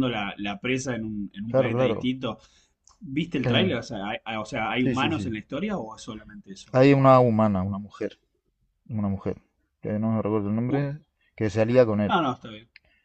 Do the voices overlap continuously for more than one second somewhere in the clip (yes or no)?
no